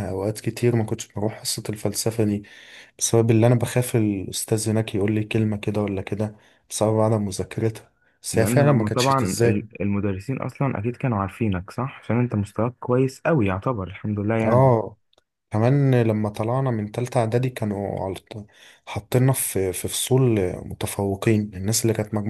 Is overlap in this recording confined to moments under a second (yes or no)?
no